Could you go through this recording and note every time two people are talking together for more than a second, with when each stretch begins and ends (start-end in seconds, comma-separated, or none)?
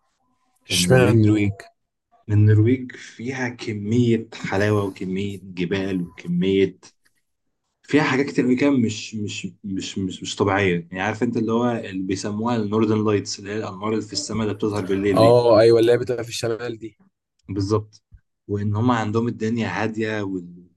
none